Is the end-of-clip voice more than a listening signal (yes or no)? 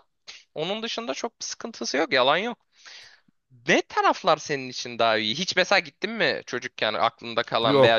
yes